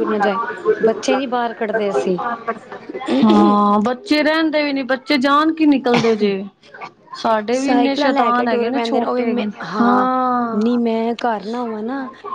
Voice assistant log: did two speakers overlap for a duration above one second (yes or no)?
yes